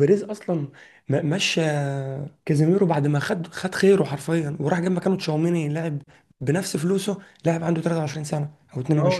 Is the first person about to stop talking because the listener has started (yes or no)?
yes